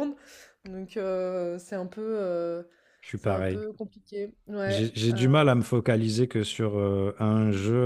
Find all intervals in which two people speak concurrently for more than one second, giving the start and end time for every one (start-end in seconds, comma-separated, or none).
none